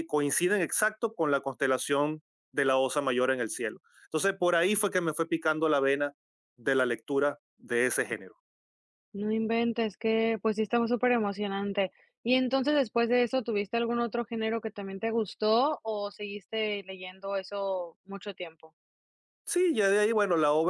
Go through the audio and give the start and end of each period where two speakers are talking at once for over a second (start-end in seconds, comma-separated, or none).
none